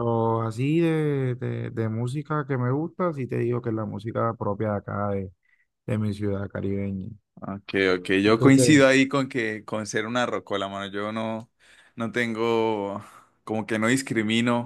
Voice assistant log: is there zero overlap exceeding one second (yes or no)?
yes